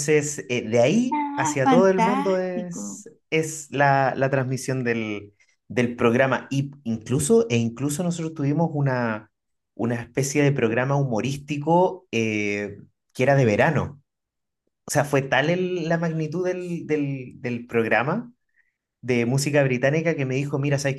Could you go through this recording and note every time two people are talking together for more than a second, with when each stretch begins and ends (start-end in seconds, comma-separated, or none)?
1.2-2.8